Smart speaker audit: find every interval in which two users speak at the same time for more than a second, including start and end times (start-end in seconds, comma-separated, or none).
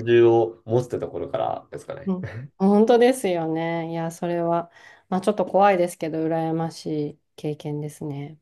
none